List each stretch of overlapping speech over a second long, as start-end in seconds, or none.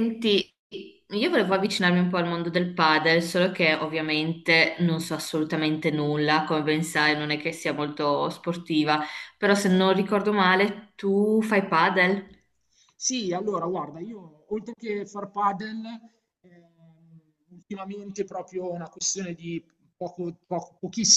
none